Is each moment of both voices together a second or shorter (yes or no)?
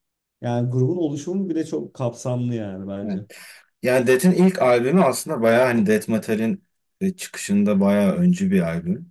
yes